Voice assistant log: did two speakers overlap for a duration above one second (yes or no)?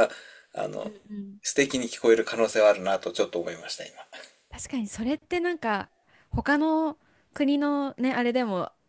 no